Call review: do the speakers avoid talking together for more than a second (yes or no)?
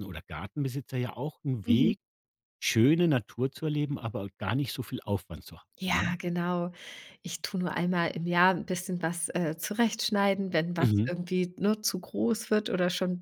yes